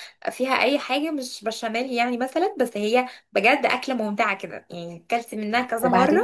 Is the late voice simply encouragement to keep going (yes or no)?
no